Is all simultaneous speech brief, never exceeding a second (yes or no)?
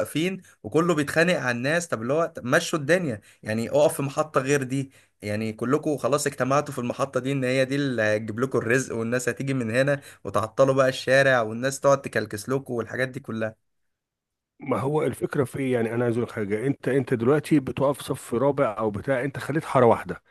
yes